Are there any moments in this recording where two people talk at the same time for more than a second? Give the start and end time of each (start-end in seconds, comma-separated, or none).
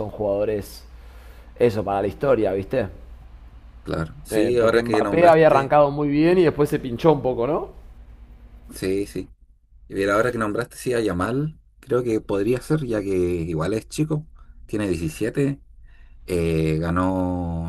4.3-5.7